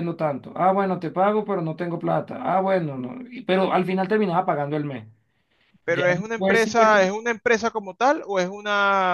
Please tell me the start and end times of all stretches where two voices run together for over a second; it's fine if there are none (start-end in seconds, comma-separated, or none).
5.9-7.1